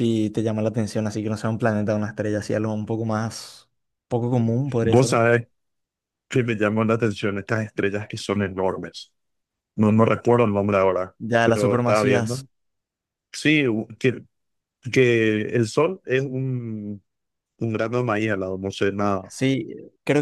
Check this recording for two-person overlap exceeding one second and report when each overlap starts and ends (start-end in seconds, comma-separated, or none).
11.2-12.4